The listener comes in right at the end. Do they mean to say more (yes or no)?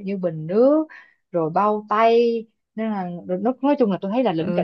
yes